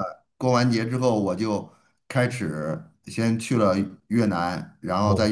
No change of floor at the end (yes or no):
yes